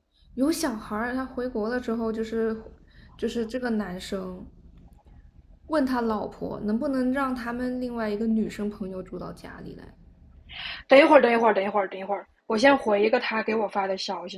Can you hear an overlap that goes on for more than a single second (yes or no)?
no